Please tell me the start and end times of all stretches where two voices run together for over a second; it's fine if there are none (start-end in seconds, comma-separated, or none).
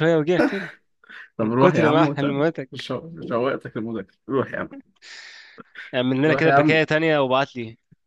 1.4-2.9